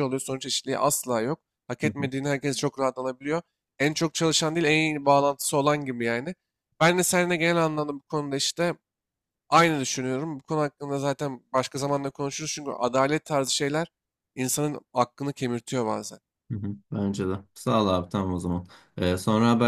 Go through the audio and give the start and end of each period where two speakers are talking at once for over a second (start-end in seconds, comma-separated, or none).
none